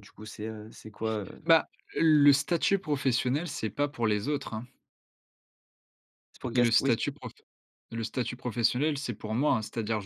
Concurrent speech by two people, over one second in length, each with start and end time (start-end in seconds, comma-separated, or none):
none